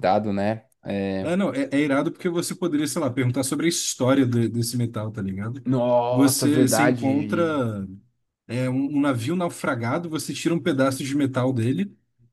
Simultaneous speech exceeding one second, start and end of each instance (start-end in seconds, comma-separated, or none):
6.1-7.6